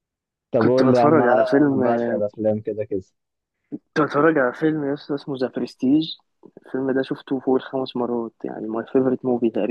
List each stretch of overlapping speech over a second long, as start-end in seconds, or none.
0.6-1.8